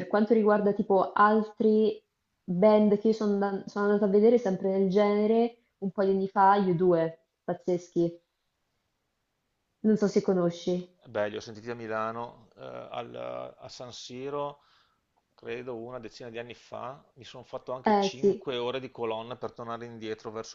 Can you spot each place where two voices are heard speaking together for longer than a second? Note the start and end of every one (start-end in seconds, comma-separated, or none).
none